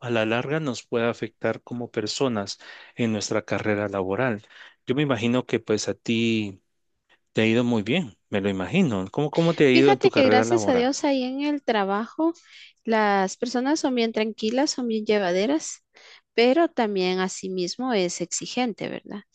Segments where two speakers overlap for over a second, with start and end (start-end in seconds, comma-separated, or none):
9.7-10.9